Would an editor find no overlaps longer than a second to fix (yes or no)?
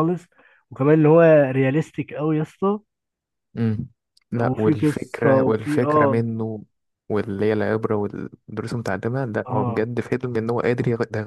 no